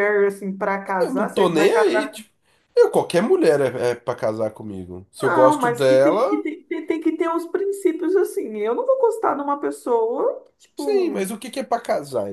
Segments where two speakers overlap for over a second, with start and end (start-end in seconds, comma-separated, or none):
1.0-2.2, 5.2-6.4